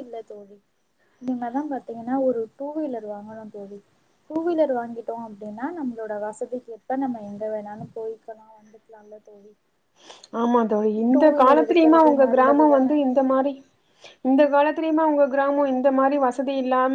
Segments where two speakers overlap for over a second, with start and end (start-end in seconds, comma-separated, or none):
11.2-12.9